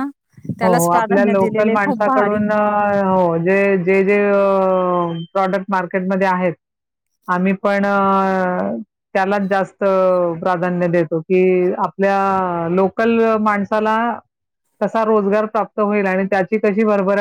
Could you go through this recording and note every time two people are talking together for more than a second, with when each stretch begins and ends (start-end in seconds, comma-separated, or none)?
0.6-2.4